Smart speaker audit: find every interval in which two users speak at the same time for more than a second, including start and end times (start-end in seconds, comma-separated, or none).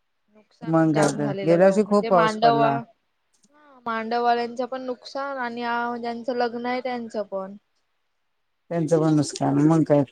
0.7-2.8